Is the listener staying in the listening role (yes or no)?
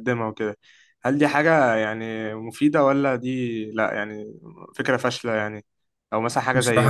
yes